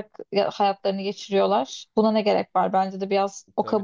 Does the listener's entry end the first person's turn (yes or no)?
yes